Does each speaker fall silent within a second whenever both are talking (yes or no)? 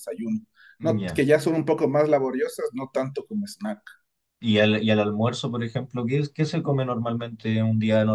yes